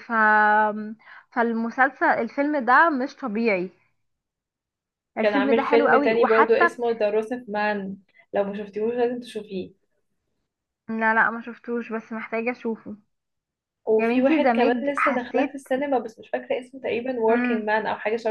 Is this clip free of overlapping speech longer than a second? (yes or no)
no